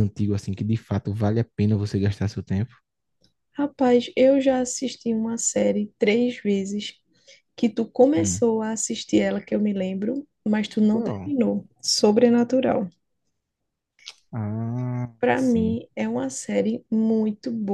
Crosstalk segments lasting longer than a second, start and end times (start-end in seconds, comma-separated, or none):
none